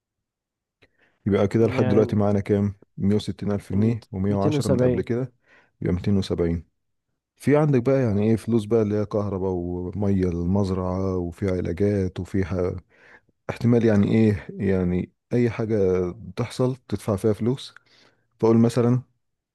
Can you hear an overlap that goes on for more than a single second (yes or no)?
yes